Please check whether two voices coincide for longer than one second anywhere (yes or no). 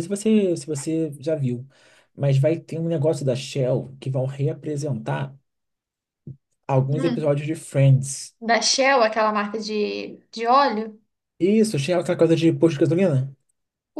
no